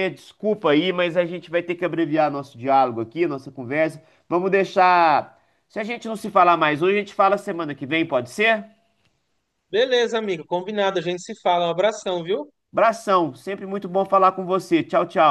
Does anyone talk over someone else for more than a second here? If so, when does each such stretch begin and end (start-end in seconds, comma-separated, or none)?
none